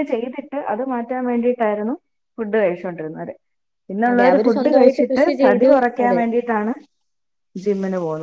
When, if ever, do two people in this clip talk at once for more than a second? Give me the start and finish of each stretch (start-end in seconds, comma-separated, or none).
4.1-6.2